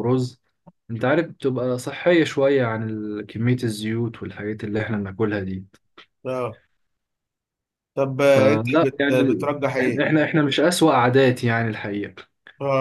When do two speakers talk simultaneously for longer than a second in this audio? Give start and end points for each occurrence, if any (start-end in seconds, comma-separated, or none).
8.3-10.1